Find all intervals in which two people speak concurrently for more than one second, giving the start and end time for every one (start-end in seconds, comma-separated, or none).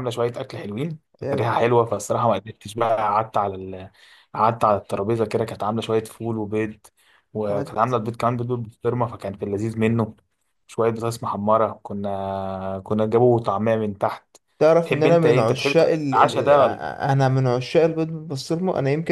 14.8-16.5